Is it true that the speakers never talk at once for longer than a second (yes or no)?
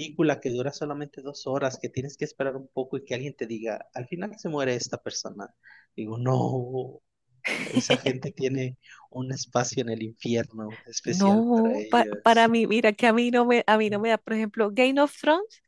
no